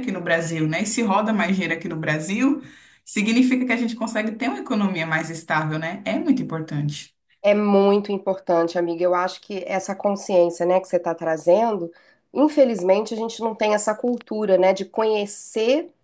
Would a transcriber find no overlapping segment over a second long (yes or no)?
yes